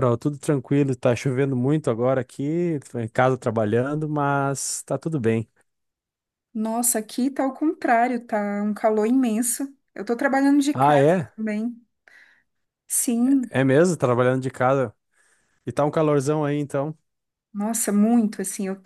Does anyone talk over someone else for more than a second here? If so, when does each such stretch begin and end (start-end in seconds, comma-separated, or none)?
none